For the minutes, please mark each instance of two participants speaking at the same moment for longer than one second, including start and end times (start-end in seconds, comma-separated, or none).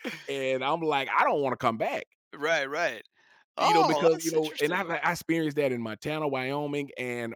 3.6-5.0